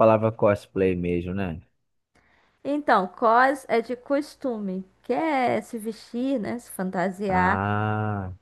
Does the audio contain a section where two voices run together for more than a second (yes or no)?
no